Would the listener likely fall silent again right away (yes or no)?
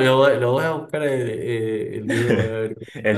no